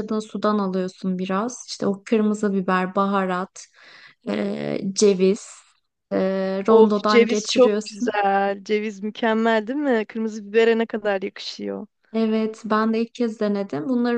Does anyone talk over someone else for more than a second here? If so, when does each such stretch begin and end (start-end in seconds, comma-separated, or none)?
6.7-8.2